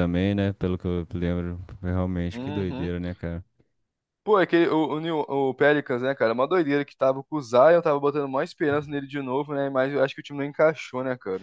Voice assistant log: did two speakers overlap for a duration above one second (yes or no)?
no